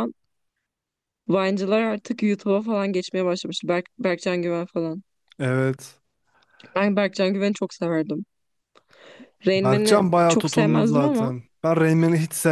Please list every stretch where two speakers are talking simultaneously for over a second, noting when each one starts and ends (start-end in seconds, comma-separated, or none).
9.6-11.3